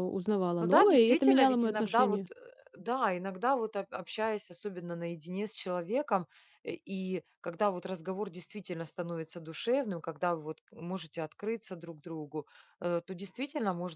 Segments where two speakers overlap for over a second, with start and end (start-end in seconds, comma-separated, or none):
0.6-2.3